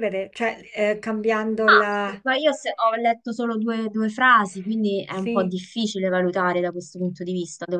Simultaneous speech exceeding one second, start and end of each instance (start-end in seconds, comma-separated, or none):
none